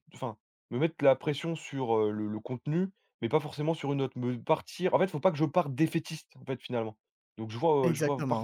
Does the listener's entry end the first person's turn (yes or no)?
no